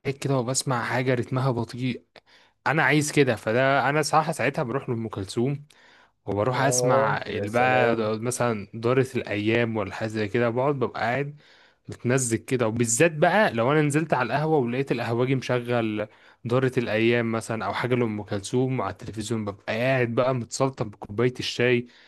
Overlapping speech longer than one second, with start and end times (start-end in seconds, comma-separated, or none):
6.5-8.1